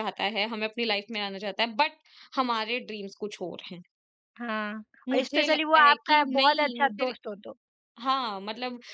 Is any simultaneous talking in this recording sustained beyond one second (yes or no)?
yes